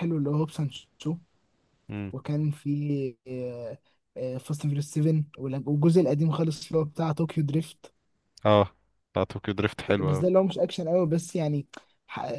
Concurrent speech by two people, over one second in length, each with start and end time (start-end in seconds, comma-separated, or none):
none